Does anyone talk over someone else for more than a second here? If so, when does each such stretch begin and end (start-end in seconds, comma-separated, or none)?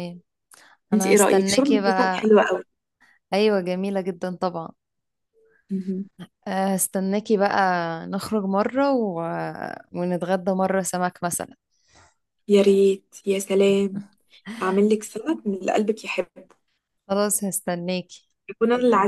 0.9-2.4